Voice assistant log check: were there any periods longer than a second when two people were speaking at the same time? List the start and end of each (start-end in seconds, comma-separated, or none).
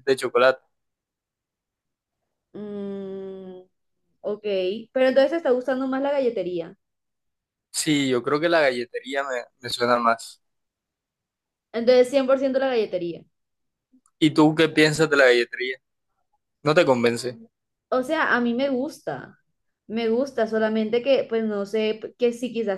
none